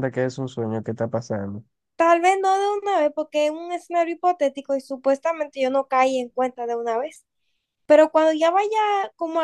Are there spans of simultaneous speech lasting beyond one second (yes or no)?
no